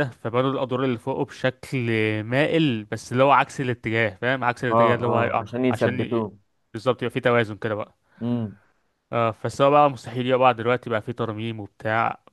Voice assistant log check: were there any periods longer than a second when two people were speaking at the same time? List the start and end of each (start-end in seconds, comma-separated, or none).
4.7-6.3